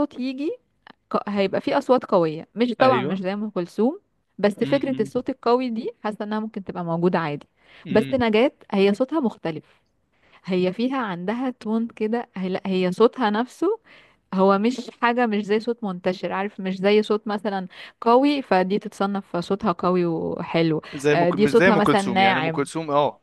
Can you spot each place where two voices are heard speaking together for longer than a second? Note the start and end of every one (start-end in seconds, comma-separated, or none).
20.9-22.6